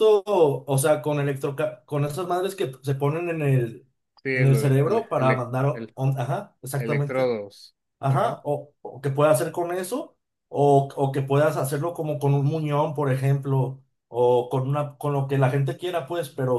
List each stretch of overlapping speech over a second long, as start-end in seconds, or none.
4.3-6.0